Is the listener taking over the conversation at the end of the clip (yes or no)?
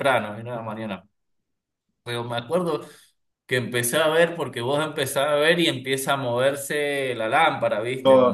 no